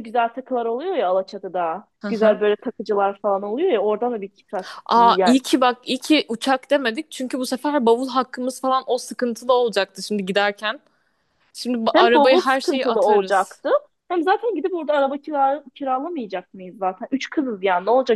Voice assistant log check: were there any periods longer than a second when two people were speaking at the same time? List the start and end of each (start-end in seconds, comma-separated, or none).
11.9-13.6